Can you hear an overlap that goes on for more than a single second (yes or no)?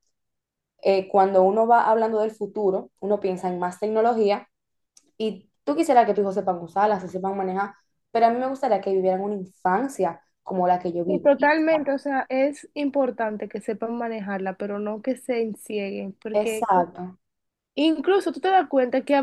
no